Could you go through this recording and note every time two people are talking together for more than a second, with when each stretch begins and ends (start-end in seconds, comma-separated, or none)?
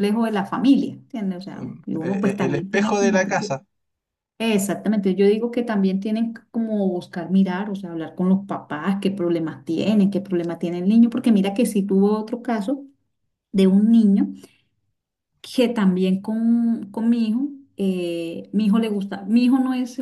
1.6-3.5